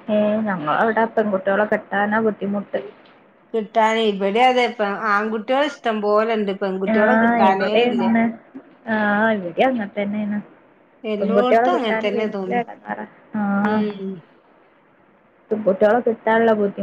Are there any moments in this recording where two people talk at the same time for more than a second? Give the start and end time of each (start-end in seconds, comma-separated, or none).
11.2-12.6